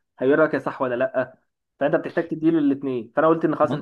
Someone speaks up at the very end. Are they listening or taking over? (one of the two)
listening